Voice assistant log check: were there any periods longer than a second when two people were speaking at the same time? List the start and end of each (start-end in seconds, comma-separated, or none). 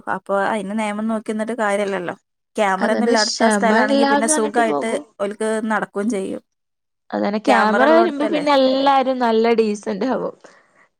2.9-5.0